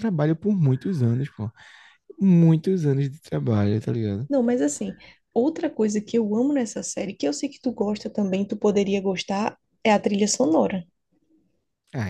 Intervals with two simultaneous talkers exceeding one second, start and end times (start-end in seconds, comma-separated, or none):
none